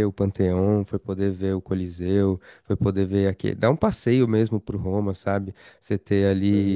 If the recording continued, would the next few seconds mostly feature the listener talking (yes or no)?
no